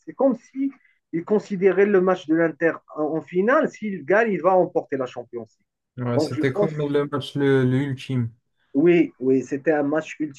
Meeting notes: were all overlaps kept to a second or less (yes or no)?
yes